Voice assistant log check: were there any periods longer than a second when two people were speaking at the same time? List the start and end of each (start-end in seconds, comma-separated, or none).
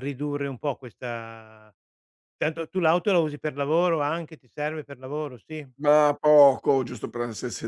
none